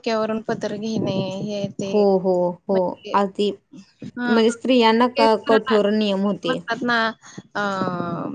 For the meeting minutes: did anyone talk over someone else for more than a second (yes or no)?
no